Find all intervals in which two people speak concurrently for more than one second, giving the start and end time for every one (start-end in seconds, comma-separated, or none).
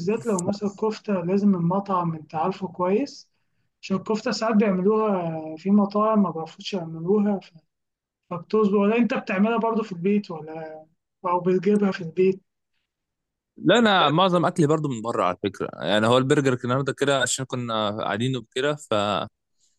none